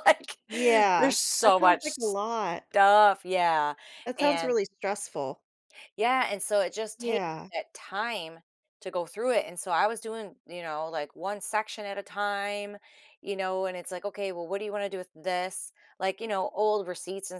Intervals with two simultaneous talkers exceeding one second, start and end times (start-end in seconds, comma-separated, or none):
1.0-2.6